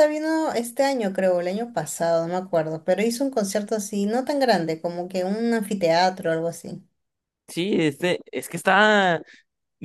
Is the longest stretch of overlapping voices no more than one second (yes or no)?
yes